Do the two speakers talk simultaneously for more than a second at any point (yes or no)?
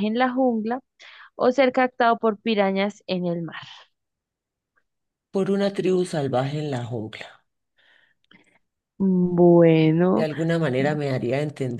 no